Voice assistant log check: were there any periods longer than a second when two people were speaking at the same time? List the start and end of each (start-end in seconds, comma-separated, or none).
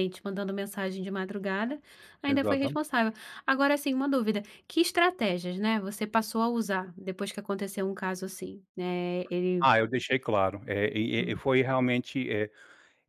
none